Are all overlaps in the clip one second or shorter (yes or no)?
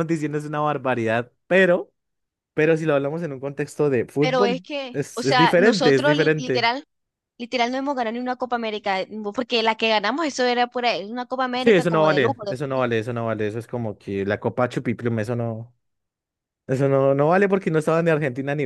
no